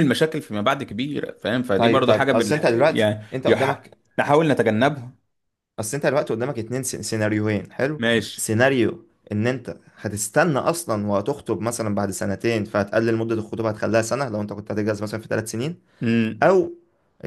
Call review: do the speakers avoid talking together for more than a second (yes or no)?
no